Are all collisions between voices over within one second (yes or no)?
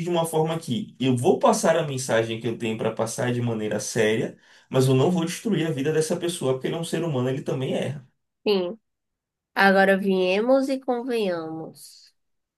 yes